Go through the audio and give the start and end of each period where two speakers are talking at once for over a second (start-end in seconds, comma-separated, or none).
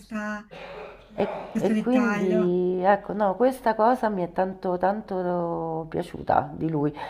1.1-2.6